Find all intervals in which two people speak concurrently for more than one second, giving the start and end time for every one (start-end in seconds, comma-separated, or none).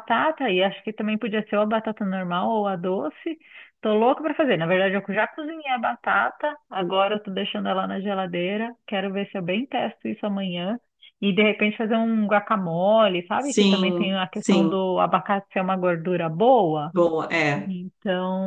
13.4-14.8